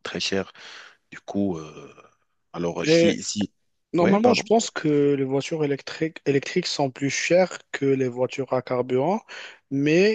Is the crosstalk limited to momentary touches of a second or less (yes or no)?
yes